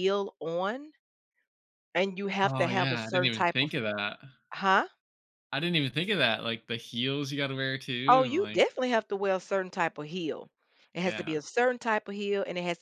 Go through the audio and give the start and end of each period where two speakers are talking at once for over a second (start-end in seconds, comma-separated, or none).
2.4-3.7